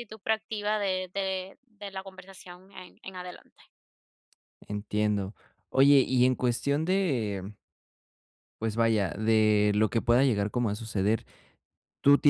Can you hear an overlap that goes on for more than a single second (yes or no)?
no